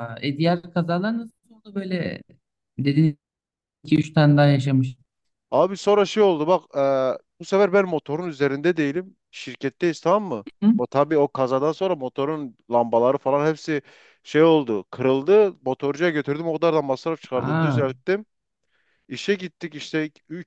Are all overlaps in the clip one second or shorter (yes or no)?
yes